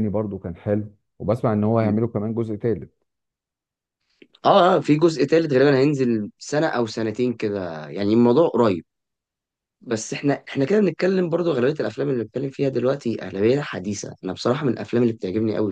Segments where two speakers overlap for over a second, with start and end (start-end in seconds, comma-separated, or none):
none